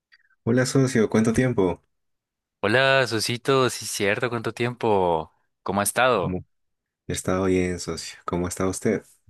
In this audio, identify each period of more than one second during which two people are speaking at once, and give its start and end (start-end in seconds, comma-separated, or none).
none